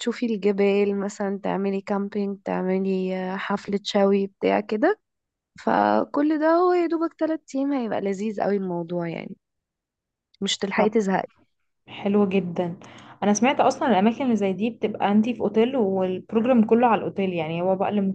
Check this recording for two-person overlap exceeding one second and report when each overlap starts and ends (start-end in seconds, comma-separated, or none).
none